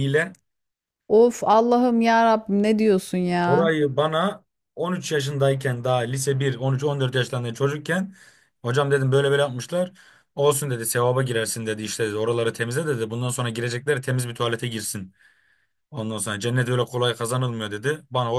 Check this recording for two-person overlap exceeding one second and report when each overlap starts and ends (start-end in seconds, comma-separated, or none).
none